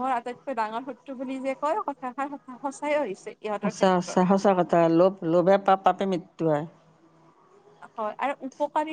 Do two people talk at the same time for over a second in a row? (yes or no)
no